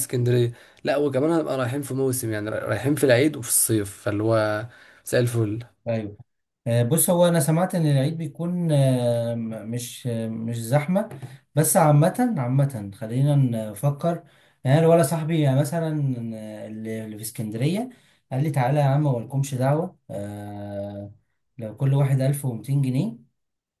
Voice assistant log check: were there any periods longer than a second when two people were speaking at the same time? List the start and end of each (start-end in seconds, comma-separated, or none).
none